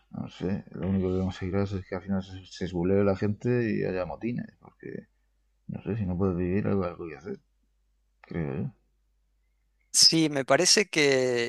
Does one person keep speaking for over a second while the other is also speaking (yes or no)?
no